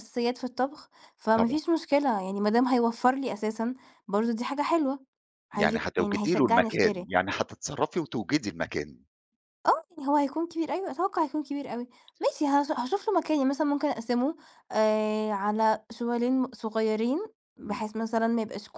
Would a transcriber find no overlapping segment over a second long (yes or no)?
no